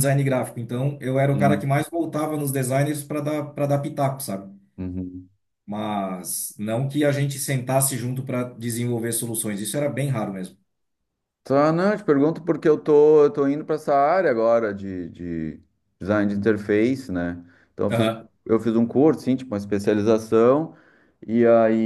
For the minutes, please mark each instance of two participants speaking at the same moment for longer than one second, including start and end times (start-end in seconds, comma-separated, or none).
none